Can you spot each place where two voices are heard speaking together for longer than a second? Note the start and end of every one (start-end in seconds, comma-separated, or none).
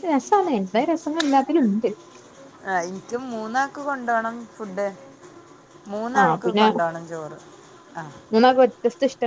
none